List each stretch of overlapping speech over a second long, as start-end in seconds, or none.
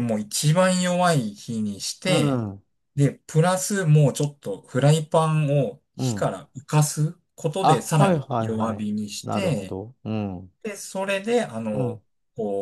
7.6-9.8